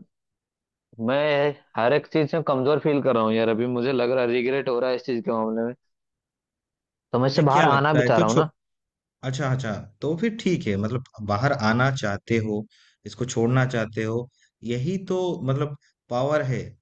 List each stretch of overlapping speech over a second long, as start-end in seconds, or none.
7.2-8.5